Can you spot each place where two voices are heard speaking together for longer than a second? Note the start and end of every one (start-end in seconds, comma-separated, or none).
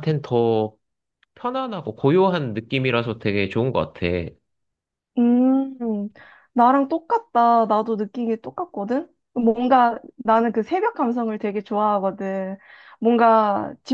none